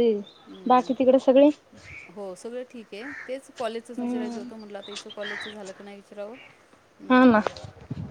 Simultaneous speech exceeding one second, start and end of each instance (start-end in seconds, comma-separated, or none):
none